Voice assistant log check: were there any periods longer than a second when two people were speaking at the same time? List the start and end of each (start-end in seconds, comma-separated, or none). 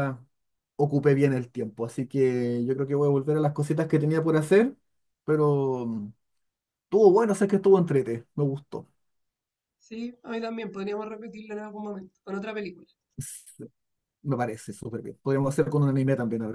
none